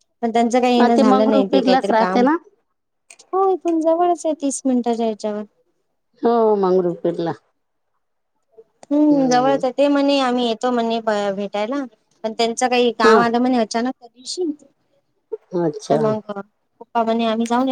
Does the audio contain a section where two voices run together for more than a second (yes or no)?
yes